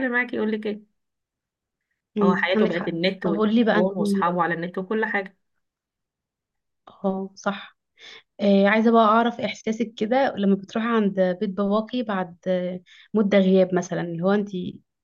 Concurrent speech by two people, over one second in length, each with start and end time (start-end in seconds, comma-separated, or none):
2.2-3.9